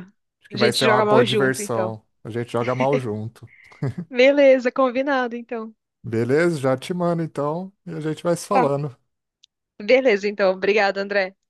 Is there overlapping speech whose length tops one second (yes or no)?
yes